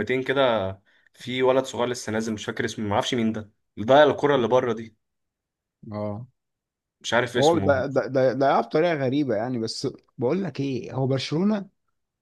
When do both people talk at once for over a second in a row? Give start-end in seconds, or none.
none